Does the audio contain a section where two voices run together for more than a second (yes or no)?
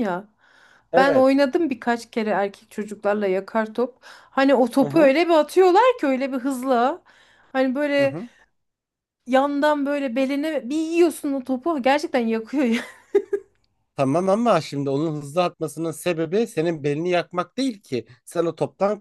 no